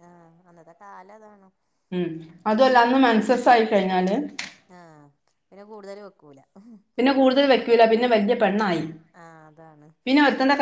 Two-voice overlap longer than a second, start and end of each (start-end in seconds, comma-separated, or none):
none